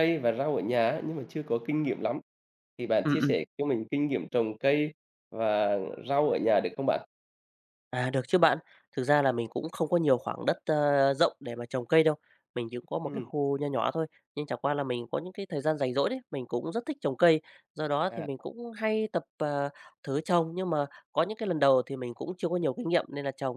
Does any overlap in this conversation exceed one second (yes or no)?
no